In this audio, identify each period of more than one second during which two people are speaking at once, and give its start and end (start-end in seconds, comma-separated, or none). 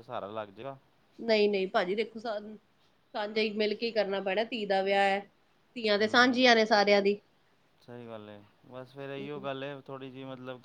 none